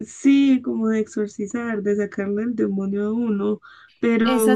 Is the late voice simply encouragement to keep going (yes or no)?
no